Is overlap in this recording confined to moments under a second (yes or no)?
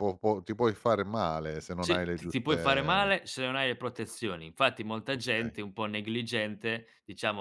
no